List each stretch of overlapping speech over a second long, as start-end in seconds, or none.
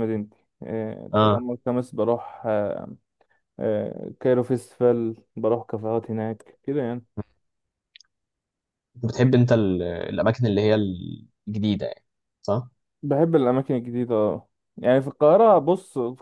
none